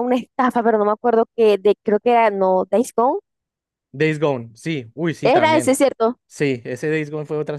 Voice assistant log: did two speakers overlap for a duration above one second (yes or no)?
no